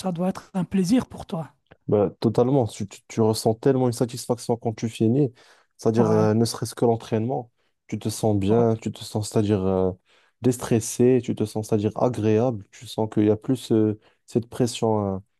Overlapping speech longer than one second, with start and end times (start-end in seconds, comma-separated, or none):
none